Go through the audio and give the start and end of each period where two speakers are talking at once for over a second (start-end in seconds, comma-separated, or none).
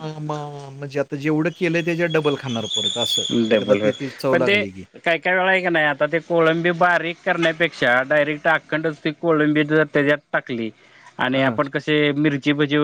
none